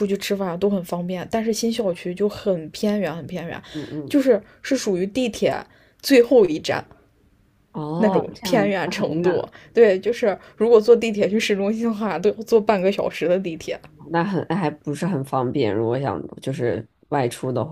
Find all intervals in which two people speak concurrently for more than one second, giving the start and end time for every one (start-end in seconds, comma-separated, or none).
8.0-9.5